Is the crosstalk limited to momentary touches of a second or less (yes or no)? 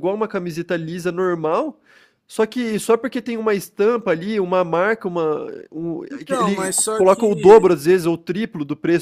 no